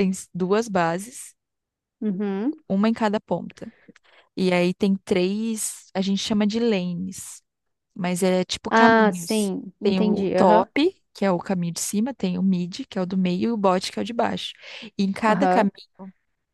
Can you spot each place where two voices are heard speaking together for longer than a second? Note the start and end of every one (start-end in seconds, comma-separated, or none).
8.7-10.7